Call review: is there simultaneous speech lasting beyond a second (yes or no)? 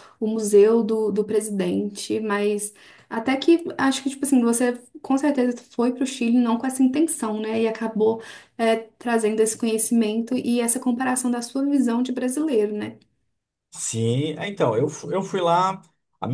no